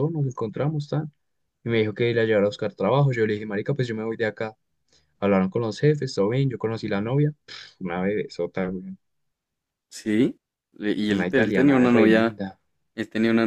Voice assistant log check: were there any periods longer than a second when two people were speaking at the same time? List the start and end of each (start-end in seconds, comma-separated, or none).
11.2-12.4